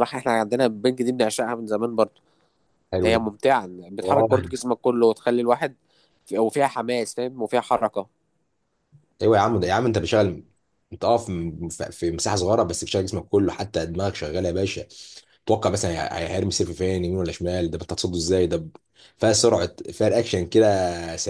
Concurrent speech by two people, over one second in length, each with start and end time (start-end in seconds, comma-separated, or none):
none